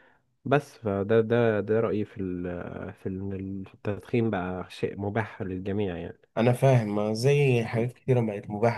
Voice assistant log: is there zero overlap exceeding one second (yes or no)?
yes